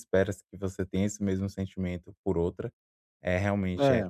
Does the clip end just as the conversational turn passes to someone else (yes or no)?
no